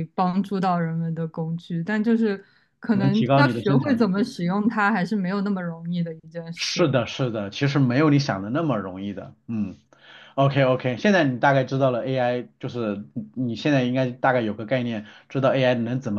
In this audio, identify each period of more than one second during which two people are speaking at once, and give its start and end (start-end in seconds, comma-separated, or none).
2.9-4.1